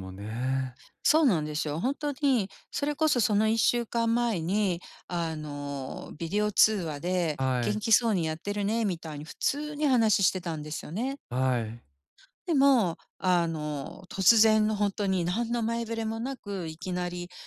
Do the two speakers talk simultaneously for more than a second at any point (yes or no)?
no